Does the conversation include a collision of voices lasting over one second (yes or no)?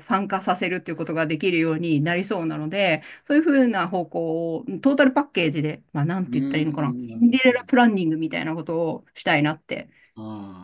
yes